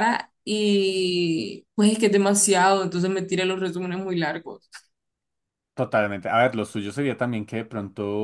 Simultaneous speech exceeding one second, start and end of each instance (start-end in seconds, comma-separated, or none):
none